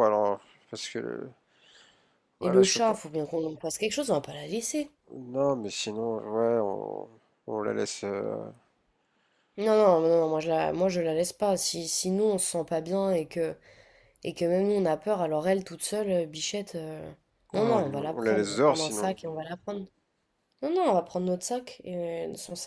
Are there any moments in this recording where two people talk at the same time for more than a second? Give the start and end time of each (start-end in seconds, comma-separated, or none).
17.5-19.1